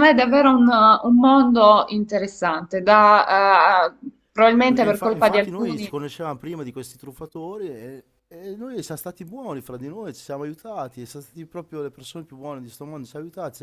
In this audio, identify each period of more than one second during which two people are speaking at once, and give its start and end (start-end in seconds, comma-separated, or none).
4.7-5.9